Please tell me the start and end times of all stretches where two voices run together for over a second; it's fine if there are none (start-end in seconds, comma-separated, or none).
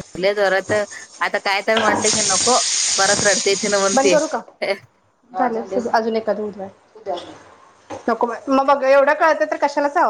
none